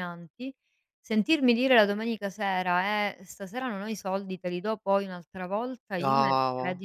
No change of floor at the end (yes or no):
yes